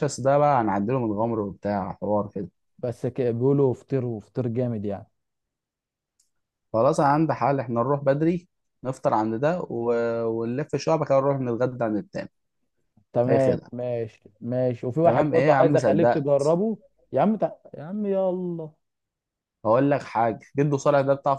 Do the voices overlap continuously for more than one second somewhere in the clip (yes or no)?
yes